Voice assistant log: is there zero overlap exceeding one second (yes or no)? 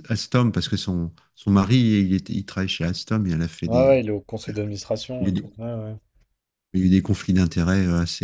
yes